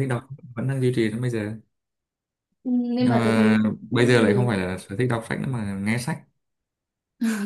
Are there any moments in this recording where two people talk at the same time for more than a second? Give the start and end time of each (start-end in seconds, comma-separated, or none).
3.0-4.5